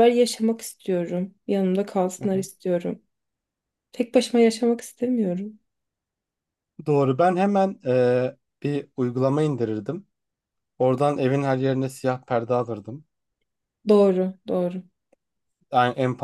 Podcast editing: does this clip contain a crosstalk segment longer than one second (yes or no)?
no